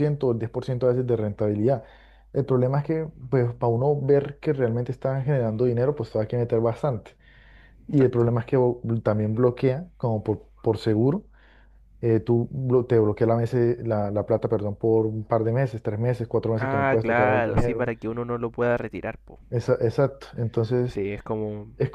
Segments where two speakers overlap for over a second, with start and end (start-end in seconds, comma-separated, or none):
16.6-17.9